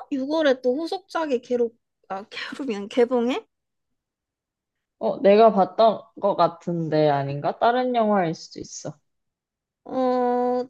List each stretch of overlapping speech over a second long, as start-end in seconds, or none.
none